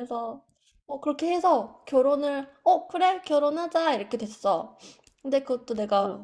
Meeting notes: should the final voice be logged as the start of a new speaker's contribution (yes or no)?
no